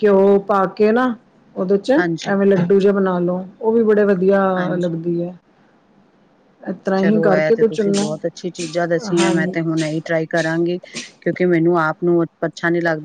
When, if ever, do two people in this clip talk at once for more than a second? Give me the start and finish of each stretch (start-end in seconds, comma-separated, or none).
none